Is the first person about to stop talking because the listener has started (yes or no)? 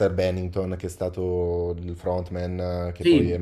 yes